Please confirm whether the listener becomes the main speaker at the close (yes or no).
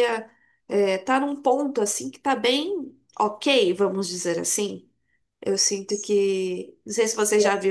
no